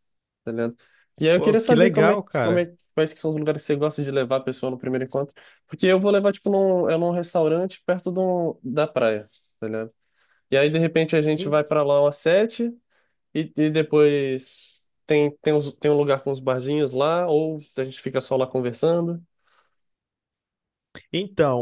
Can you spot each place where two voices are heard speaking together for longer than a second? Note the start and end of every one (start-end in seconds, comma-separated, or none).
1.4-2.6